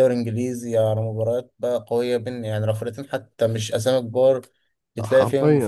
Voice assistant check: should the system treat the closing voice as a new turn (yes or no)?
yes